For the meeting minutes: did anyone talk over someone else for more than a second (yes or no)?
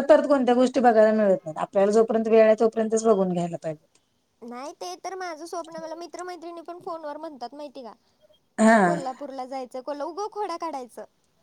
no